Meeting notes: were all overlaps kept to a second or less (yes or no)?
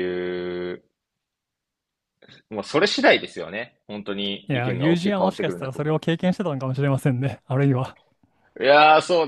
no